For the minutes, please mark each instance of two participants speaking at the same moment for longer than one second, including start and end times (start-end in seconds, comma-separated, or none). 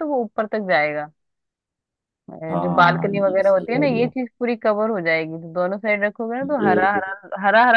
2.5-4.1